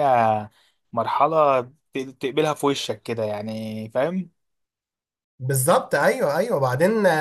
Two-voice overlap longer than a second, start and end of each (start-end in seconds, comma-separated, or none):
none